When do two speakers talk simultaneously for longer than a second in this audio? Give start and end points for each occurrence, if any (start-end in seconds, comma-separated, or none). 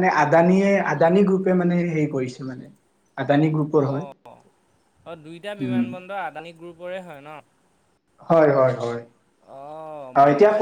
none